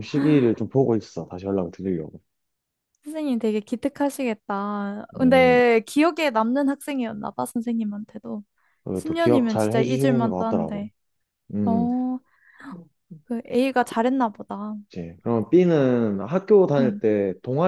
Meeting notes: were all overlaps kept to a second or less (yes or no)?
no